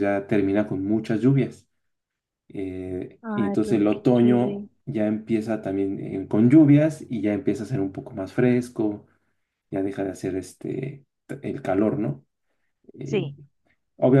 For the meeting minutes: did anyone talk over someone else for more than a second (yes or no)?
yes